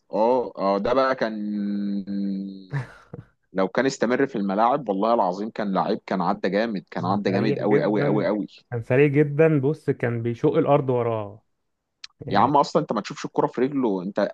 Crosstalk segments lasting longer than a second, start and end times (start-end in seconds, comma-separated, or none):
7.0-8.3